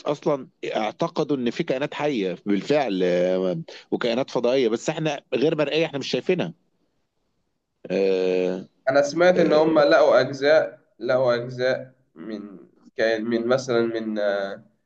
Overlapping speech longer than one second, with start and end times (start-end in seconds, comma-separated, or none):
none